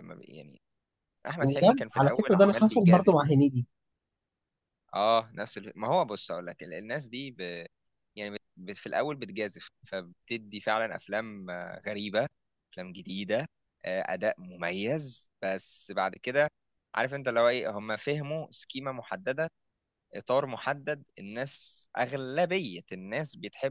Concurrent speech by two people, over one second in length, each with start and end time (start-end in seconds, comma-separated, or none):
1.4-3.1